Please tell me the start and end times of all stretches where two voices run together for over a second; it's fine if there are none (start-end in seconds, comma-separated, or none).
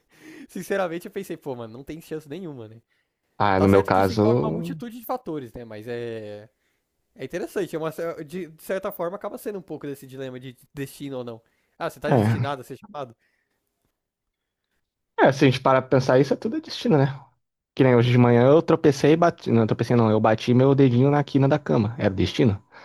3.5-4.8